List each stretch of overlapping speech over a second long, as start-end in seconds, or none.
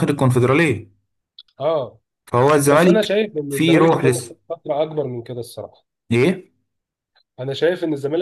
2.7-4.3